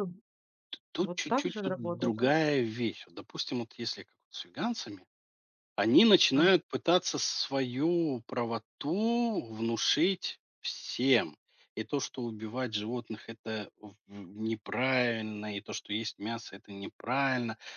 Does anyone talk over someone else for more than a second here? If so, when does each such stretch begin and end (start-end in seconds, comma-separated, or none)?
1.0-2.3